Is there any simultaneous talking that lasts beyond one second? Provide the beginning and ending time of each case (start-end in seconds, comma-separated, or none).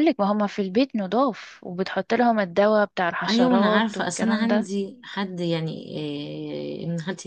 3.3-4.7